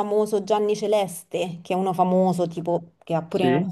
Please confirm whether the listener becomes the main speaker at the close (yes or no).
no